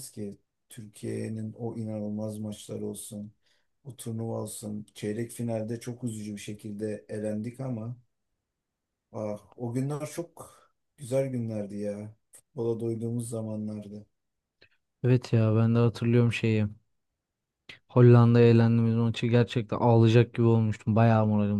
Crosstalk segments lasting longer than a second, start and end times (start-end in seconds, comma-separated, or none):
none